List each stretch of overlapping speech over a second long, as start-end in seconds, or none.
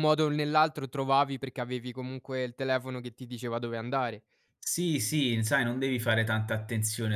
none